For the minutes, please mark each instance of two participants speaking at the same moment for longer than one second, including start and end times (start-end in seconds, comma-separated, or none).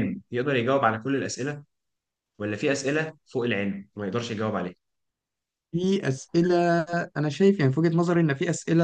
none